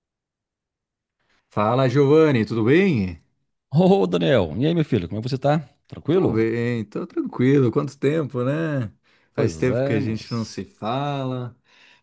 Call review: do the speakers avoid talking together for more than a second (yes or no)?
no